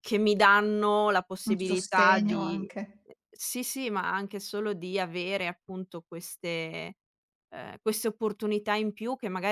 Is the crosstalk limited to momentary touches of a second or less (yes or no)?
no